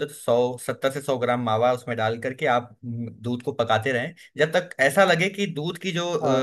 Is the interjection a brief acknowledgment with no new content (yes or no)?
yes